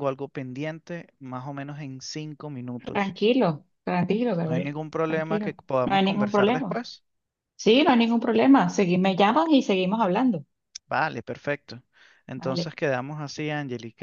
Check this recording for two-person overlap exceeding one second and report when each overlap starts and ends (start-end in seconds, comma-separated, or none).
4.5-6.8